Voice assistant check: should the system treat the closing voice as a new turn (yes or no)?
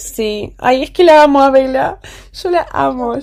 yes